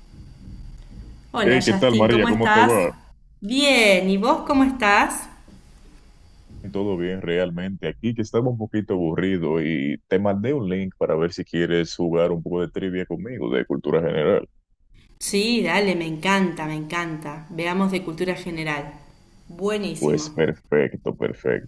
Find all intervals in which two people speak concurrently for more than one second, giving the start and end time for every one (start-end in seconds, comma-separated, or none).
1.4-2.9